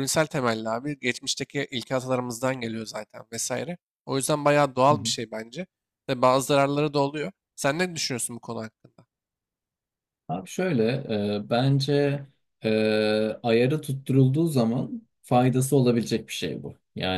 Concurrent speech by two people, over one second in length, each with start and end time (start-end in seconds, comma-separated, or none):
none